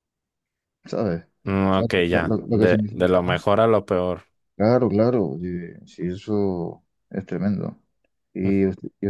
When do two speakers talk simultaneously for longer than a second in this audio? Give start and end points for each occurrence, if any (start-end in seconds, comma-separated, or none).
1.8-3.4